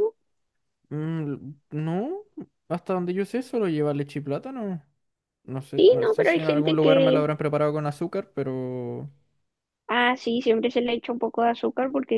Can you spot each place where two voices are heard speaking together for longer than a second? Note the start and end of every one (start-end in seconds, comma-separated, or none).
5.8-7.3